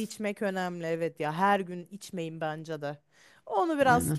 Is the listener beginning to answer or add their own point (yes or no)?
no